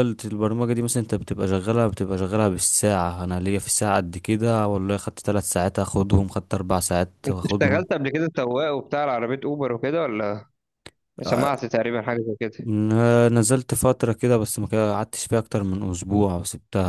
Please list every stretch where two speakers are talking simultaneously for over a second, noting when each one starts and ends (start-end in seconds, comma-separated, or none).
none